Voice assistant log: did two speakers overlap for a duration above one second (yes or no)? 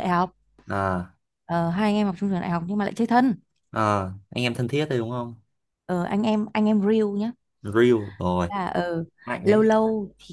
no